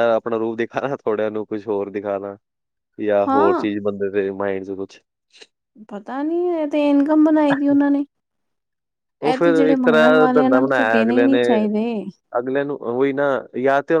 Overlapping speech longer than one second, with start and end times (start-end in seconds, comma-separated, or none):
9.3-11.4